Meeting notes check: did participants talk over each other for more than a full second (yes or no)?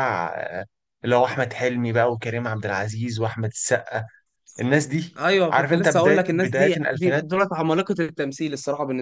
yes